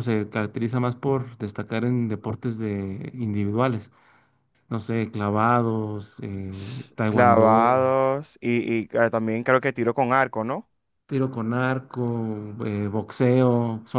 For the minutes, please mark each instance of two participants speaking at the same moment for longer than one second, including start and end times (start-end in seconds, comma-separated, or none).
6.5-7.8